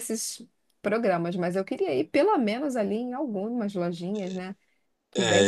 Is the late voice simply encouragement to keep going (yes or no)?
no